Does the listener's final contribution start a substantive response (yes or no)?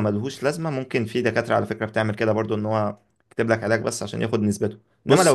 no